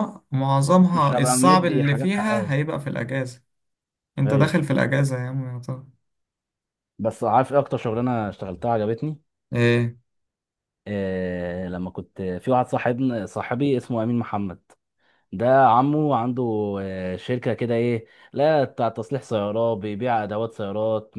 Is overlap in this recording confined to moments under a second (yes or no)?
no